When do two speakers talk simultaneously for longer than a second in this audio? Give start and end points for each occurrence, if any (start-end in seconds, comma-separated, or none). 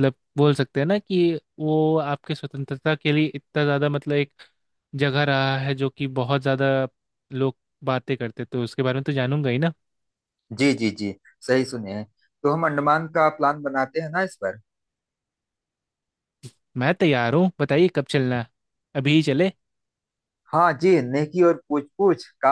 none